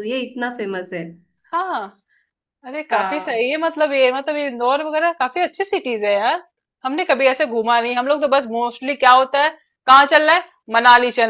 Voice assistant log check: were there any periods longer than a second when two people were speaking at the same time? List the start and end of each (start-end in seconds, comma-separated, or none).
none